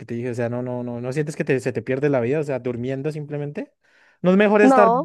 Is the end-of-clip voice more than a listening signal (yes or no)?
no